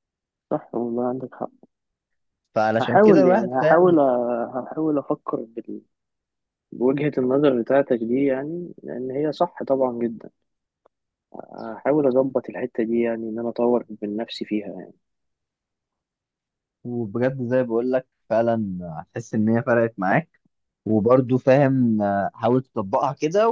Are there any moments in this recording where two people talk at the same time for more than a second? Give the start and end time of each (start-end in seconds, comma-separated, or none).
2.8-4.0